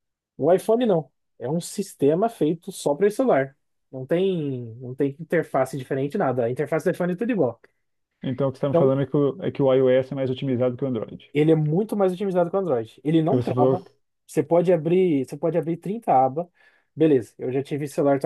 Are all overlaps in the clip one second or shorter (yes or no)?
yes